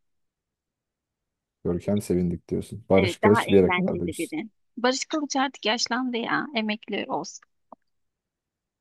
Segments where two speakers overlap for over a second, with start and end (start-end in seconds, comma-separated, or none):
2.9-4.4